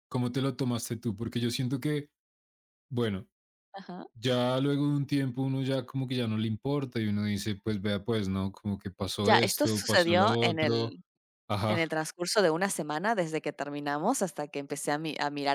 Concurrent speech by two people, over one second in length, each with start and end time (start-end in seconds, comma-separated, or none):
9.2-11.0